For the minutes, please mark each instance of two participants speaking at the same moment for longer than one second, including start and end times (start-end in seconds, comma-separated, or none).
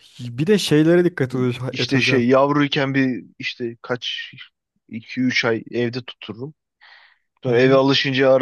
none